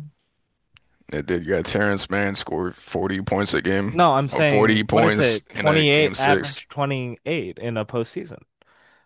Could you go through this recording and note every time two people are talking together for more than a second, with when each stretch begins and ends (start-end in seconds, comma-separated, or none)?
3.9-6.6